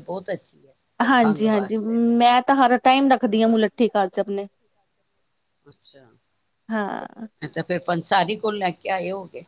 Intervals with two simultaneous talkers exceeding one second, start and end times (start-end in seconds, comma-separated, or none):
none